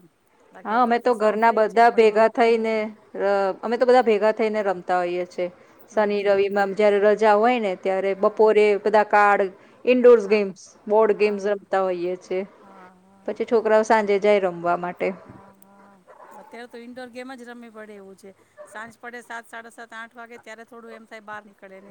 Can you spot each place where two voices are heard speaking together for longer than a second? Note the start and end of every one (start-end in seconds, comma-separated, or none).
0.7-2.7